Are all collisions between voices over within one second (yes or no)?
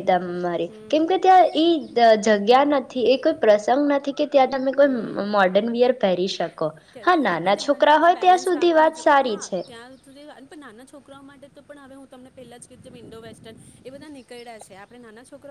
no